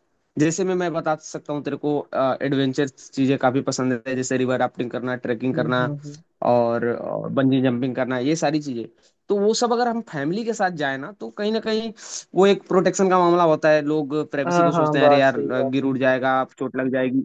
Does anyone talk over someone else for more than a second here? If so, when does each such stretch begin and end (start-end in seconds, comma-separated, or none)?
14.5-15.9